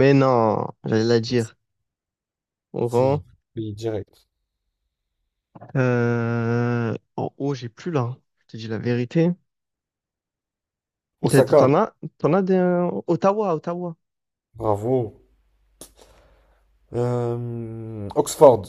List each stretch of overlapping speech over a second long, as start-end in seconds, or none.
none